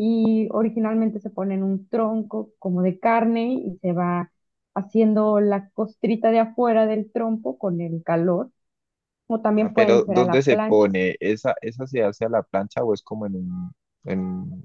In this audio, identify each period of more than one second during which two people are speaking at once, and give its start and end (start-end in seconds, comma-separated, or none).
9.5-10.9